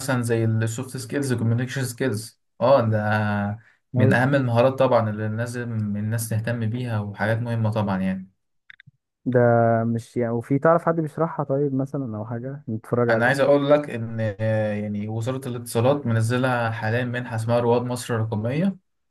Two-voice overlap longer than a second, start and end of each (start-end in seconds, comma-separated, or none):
none